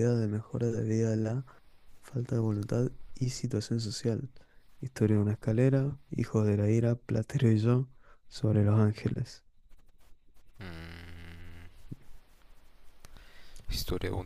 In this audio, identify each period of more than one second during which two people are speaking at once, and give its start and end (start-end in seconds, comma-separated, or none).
none